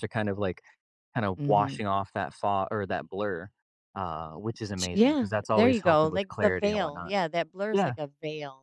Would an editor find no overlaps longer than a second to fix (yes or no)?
no